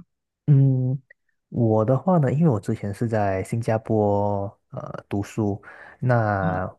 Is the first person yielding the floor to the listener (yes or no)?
no